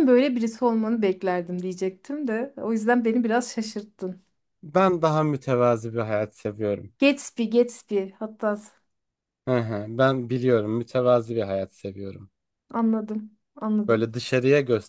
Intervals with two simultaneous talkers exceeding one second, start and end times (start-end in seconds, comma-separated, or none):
none